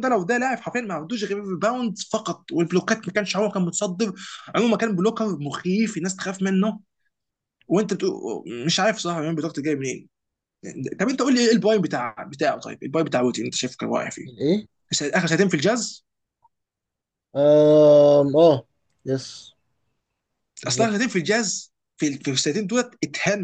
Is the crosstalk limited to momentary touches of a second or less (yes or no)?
yes